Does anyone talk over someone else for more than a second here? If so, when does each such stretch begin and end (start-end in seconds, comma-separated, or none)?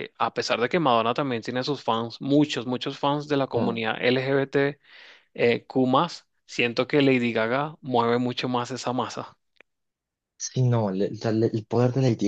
none